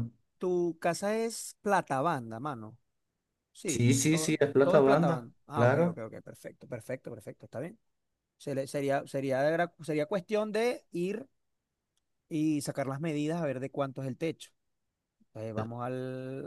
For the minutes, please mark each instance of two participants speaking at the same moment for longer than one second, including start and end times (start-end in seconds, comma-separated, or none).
3.7-6.0